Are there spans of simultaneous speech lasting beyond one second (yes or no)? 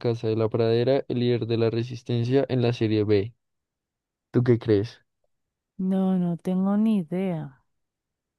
no